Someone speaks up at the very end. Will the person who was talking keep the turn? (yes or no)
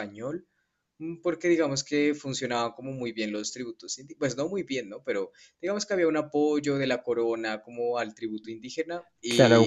no